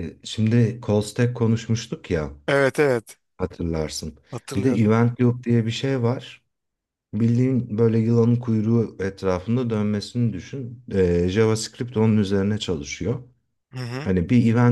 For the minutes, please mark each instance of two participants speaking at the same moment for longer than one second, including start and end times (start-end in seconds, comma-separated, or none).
none